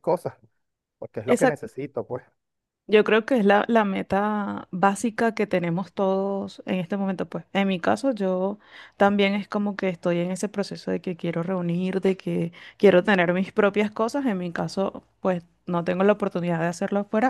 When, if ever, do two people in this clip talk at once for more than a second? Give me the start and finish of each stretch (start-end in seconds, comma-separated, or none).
none